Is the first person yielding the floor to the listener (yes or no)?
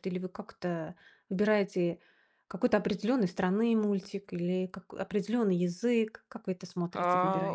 yes